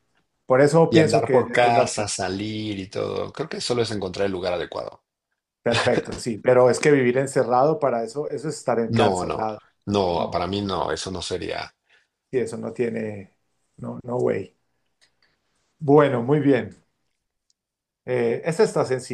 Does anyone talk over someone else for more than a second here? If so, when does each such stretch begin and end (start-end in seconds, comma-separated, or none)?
0.9-2.1